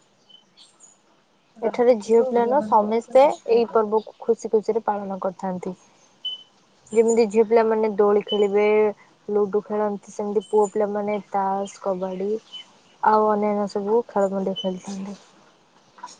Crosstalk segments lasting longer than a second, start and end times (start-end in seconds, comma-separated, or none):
1.7-3.9